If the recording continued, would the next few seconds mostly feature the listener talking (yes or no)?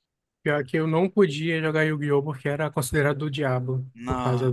no